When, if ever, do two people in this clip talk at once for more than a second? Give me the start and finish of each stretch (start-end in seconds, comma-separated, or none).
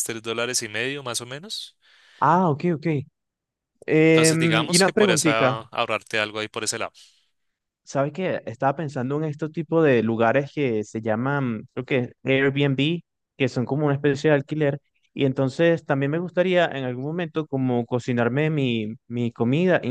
4.1-5.6